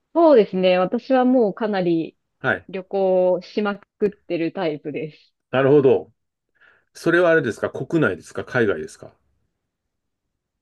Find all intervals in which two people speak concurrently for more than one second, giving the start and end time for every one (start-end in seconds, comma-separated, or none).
none